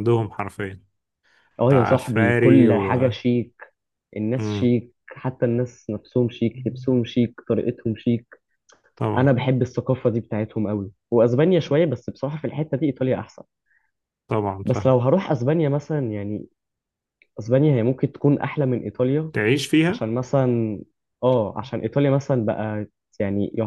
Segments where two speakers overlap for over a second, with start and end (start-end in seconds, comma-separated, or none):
1.7-3.0